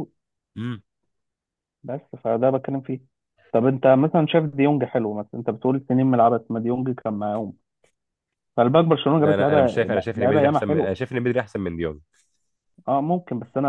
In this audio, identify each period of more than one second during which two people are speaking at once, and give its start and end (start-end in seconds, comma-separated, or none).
9.2-10.9